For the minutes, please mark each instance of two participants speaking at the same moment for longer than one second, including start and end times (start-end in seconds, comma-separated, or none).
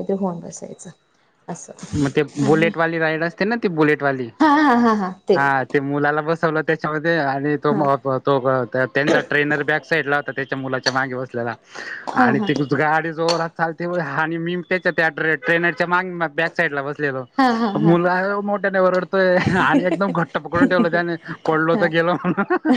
none